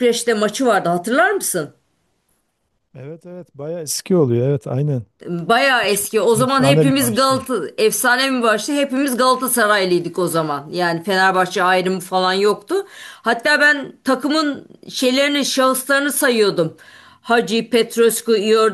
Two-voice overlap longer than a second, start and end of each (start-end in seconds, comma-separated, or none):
5.9-7.5